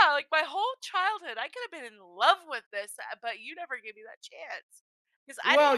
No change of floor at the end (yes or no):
no